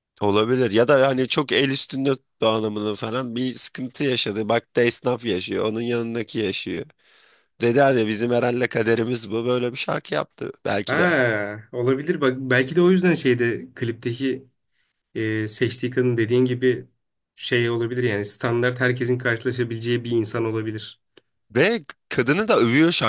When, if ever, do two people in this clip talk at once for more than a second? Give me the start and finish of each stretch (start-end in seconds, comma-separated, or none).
none